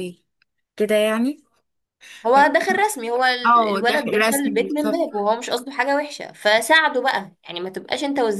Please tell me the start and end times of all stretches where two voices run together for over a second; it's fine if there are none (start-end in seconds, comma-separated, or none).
3.4-5.0